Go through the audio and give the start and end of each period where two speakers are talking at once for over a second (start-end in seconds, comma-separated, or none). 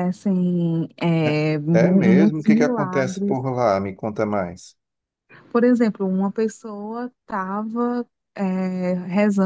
1.2-3.4